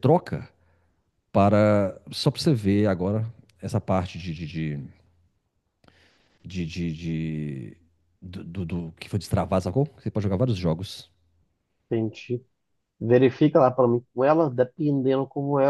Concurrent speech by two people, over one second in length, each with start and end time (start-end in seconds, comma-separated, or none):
none